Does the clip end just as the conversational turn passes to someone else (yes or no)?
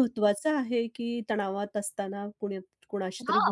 yes